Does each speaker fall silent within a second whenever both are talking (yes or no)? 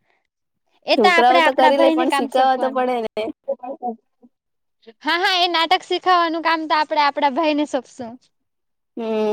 no